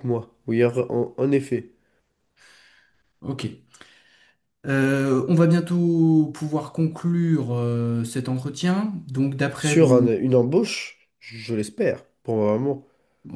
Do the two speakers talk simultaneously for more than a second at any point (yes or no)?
no